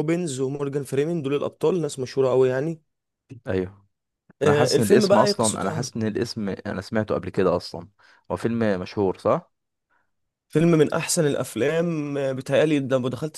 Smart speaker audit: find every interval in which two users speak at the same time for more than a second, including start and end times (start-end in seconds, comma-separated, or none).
4.4-5.9